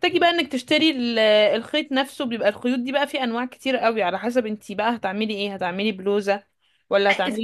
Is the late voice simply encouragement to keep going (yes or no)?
no